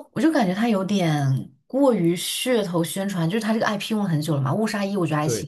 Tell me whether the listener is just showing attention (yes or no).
yes